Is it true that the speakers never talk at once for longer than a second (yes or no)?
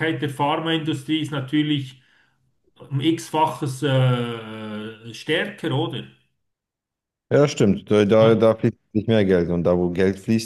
yes